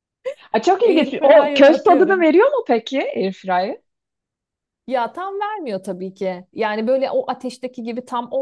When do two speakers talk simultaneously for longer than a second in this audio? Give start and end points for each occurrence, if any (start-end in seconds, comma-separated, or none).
0.8-2.2